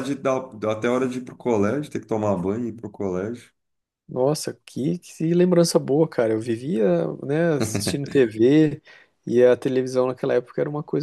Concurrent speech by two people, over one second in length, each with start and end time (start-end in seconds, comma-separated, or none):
none